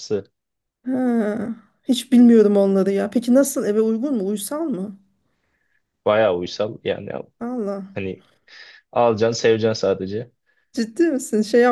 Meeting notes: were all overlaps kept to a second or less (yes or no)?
yes